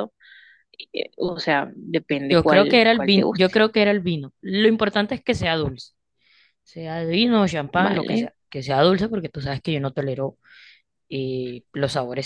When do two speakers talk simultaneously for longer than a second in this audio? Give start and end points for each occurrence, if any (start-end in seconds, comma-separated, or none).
2.3-3.5